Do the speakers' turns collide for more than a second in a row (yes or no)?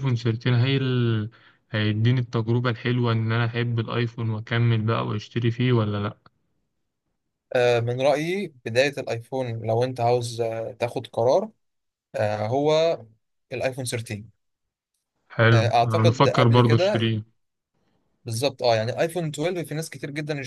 yes